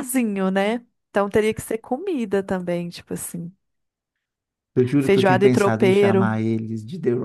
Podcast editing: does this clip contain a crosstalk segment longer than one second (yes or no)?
yes